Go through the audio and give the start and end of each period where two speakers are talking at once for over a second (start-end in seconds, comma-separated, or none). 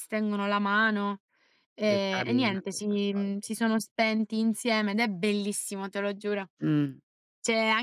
1.8-3.5